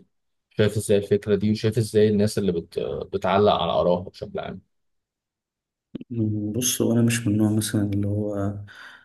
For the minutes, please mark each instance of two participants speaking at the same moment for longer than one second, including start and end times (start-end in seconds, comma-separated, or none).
none